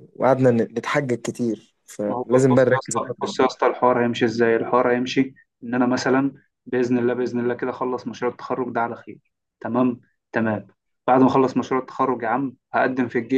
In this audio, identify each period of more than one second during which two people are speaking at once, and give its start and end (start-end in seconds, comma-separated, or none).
2.1-3.6